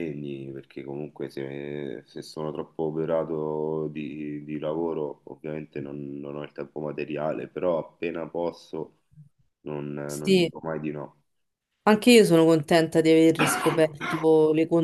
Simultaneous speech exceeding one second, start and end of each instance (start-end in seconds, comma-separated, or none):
none